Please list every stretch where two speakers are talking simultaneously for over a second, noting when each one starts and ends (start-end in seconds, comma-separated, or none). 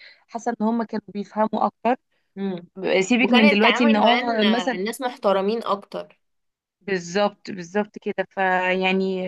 3.2-4.8